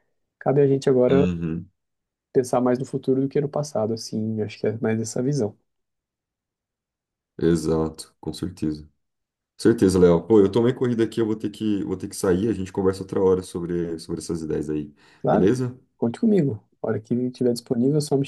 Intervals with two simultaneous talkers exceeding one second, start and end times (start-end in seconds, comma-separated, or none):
none